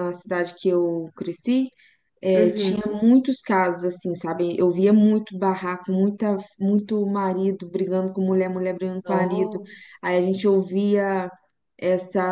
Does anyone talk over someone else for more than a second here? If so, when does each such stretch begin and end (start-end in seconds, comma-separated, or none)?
none